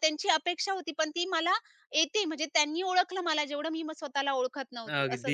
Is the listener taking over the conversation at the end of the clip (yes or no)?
yes